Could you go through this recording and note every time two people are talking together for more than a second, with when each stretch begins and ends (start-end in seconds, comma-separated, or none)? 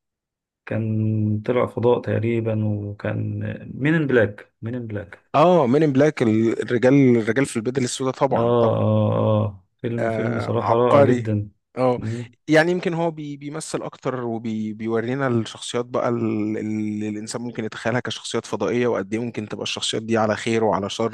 10.0-11.3